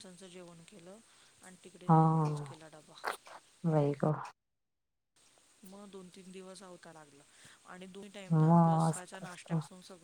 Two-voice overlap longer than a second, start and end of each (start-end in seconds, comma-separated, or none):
8.3-9.5